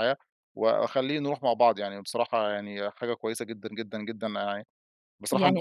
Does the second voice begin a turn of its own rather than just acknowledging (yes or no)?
no